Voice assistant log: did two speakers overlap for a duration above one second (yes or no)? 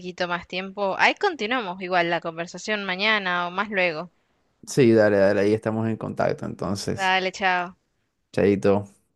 no